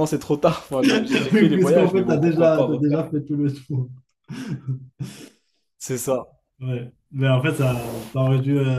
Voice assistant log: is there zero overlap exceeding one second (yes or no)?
no